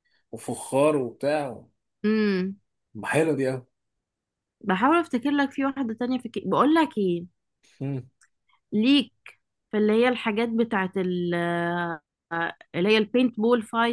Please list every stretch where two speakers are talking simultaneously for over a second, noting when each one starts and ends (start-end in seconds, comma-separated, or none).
none